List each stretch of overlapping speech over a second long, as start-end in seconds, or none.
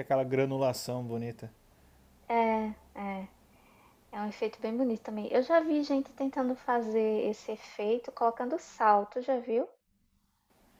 none